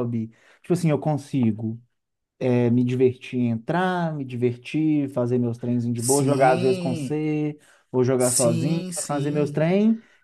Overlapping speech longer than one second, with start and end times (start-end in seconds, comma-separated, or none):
6.0-7.2, 8.2-9.6